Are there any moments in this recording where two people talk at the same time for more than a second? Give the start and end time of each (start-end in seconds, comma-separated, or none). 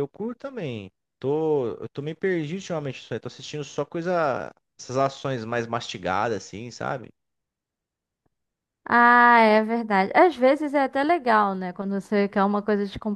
none